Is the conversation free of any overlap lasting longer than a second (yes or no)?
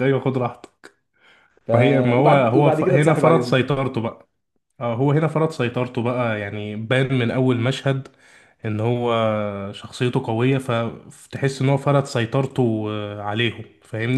no